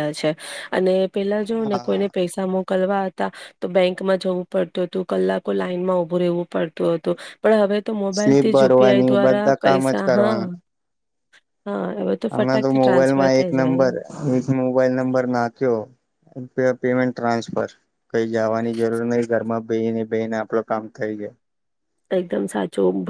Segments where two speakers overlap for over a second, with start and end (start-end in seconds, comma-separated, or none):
8.2-10.0, 12.3-13.9